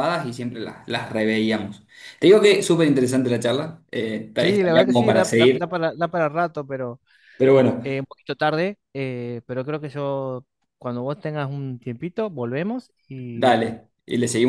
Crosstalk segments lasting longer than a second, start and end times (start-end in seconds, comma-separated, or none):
4.4-5.7